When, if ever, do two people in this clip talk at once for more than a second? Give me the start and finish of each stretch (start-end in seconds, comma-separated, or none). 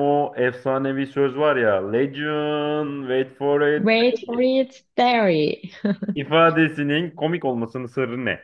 none